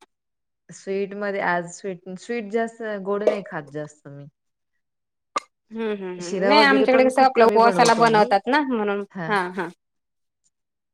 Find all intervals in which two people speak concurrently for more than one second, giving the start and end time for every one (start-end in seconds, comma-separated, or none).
6.2-8.3